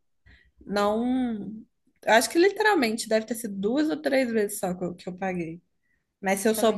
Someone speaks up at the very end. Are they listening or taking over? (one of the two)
taking over